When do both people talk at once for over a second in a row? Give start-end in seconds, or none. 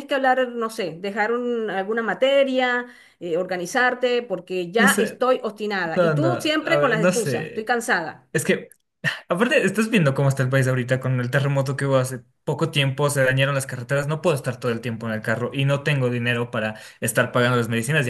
5.9-7.7